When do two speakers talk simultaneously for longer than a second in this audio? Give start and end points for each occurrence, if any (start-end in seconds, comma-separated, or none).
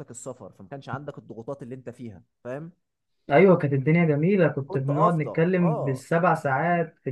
4.7-6.0